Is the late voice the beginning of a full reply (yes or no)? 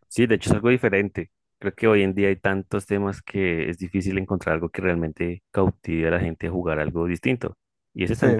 no